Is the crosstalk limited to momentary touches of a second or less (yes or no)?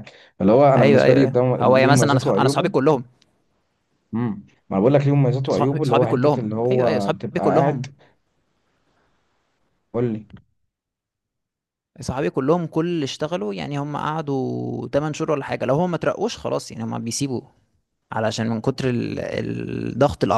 no